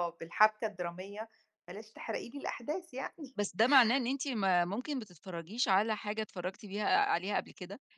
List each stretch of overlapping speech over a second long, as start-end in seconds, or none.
none